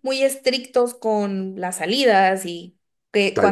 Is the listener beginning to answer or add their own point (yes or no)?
no